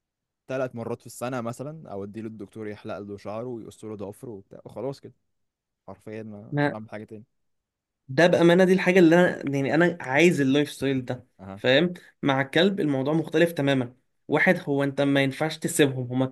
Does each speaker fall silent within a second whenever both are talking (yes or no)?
yes